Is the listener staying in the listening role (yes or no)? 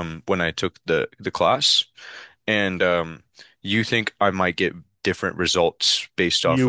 no